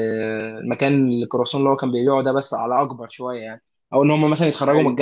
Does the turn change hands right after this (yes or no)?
no